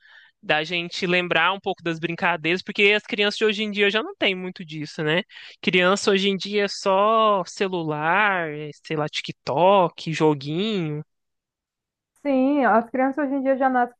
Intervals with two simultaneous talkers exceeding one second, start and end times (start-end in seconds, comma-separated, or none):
none